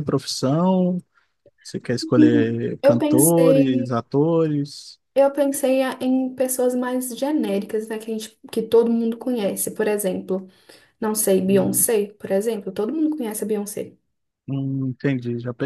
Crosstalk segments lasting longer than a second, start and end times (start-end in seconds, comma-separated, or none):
2.2-3.9